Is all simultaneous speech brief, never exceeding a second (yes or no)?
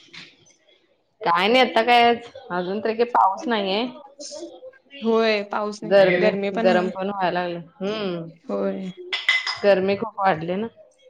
yes